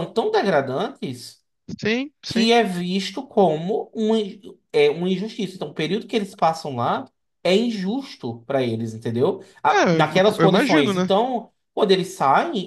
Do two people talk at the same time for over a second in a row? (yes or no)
yes